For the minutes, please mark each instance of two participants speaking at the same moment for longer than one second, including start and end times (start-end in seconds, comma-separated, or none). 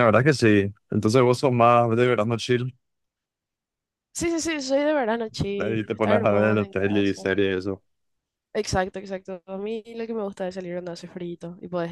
5.6-7.2